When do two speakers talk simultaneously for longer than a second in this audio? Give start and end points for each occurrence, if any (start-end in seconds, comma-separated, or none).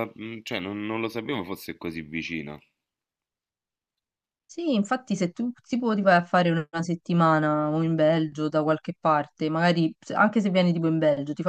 none